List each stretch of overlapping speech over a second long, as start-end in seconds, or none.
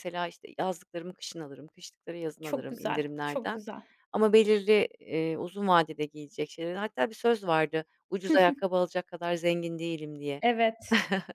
2.4-3.6